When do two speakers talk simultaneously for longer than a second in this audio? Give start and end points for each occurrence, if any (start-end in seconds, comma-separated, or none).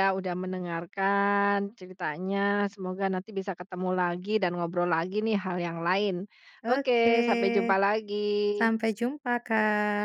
none